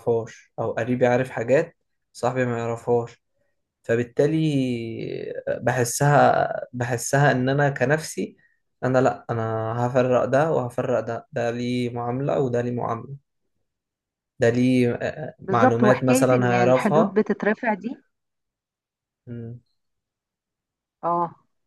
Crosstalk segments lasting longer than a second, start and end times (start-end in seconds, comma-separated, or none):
15.5-17.2